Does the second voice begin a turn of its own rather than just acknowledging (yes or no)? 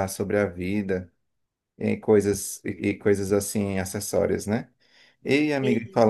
no